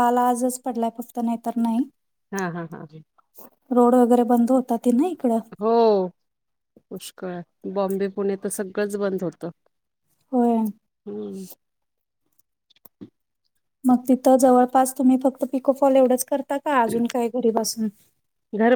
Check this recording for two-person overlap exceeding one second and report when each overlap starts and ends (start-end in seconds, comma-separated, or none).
none